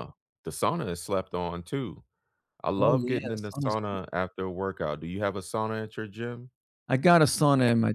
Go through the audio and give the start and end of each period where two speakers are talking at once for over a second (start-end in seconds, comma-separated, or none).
2.8-4.0